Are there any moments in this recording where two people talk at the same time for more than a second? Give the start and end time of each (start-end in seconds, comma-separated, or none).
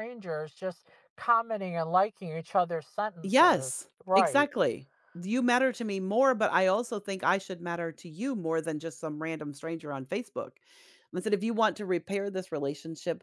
3.2-4.5